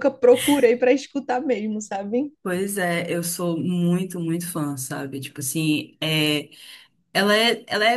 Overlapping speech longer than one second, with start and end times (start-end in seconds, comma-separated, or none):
none